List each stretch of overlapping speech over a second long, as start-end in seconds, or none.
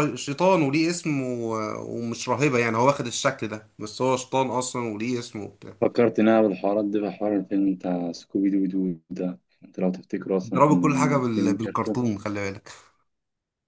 10.4-12.0